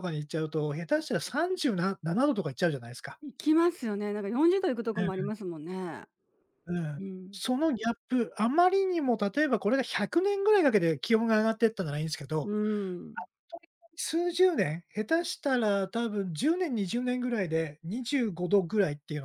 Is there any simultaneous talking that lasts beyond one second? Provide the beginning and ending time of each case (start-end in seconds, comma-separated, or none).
none